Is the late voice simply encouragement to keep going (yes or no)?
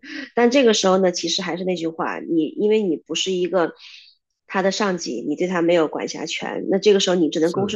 yes